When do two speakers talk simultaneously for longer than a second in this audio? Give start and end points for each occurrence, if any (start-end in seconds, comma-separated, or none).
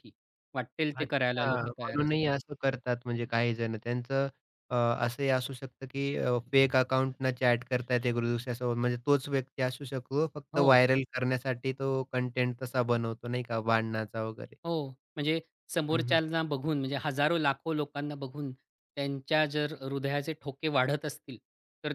0.9-2.3